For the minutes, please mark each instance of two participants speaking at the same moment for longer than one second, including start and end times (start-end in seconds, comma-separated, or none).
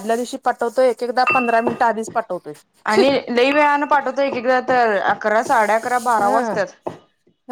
none